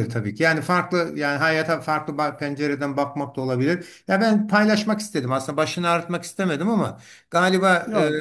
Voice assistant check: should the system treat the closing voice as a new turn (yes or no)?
no